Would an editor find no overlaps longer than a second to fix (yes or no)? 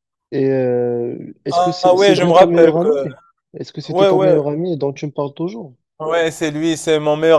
no